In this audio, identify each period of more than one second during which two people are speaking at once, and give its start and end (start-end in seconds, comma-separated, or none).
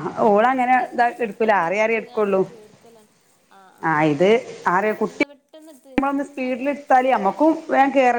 0.6-2.4